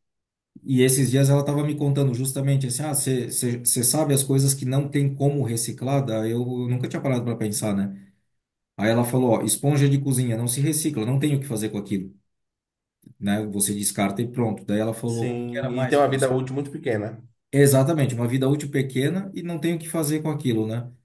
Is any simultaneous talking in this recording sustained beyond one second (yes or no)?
yes